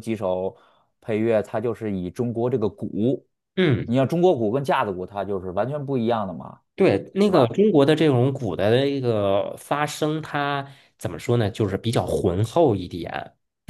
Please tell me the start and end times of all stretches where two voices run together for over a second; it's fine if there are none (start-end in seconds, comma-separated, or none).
none